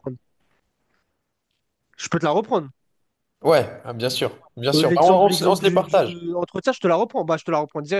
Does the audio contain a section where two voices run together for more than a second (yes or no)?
yes